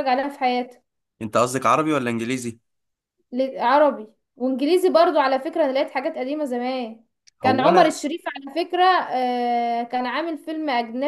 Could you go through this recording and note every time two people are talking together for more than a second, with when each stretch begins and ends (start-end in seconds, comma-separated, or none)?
none